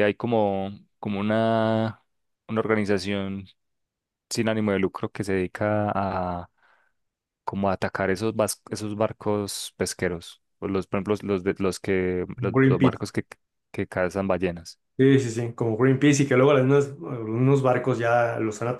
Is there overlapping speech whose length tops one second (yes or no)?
no